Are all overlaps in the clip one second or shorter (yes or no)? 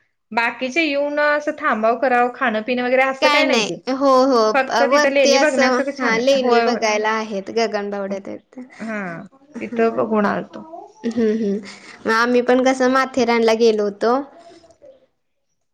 no